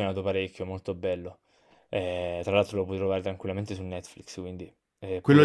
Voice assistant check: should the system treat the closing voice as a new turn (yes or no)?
yes